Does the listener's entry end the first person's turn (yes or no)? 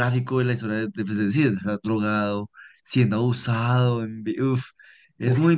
yes